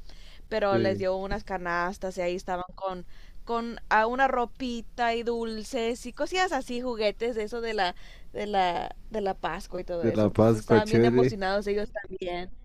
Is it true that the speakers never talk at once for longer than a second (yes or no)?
no